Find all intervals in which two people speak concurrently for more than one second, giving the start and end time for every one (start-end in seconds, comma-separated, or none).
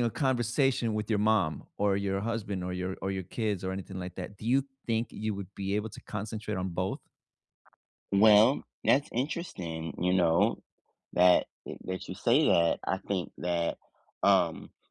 none